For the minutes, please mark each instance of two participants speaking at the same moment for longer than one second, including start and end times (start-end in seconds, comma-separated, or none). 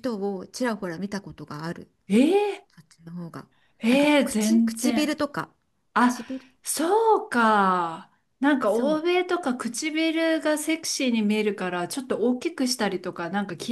3.9-5.2